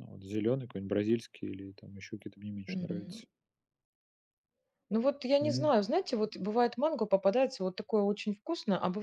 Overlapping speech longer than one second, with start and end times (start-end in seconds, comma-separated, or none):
none